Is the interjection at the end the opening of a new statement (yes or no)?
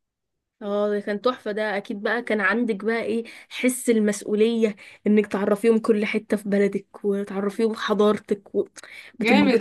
yes